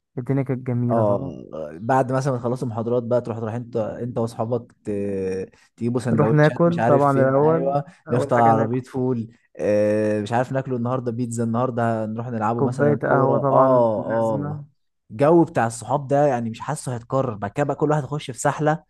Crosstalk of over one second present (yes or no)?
yes